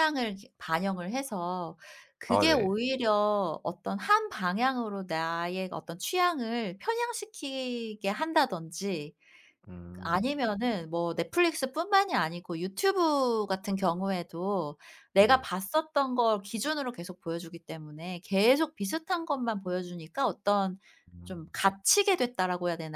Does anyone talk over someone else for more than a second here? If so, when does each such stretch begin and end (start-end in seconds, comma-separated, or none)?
none